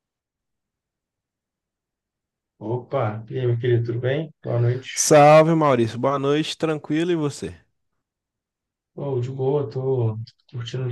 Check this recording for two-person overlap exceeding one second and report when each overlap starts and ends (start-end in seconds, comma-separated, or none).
none